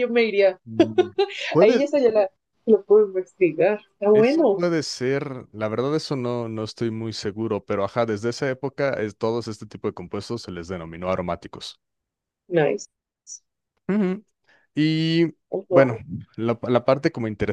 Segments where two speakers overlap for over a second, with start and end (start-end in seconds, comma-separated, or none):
none